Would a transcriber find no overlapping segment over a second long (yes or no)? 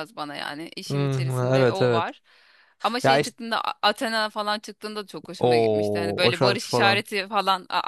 no